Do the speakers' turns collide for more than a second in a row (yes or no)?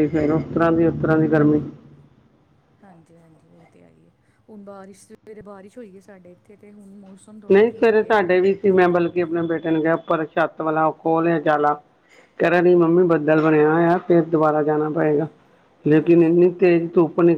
no